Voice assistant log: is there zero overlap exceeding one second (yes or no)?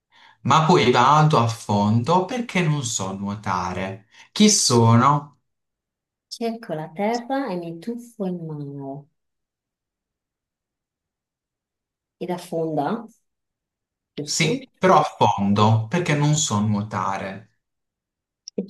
yes